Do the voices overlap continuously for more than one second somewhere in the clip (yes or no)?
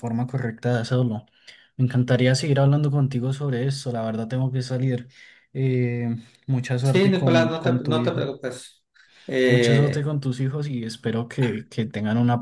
yes